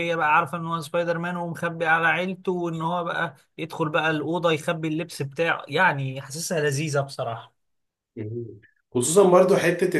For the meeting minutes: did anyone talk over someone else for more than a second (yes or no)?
no